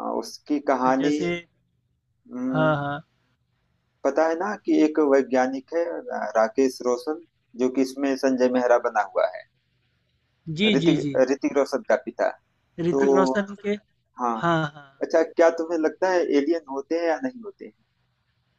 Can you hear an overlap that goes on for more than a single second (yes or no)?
no